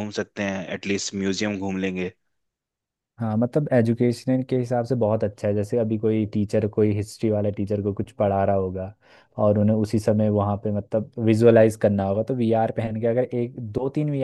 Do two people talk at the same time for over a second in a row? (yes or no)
no